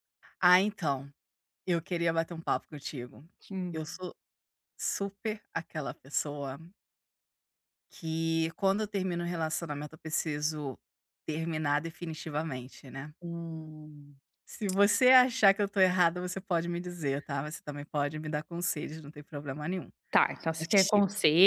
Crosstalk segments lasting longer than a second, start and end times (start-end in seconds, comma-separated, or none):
none